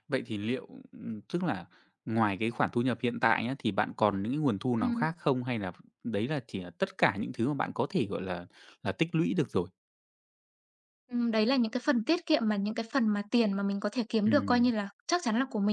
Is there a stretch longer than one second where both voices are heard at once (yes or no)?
no